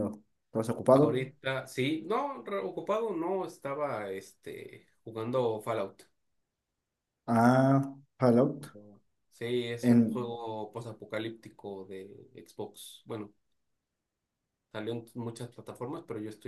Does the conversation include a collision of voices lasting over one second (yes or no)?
no